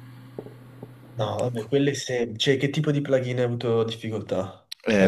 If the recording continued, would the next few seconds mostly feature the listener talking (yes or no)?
yes